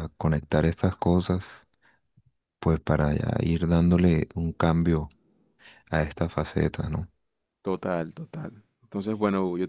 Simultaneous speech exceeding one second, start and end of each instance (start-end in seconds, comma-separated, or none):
none